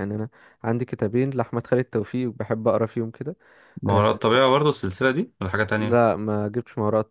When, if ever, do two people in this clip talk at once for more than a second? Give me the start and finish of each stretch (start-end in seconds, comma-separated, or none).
none